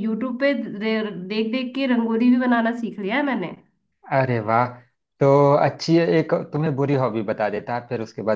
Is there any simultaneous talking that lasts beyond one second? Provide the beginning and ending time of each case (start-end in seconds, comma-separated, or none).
none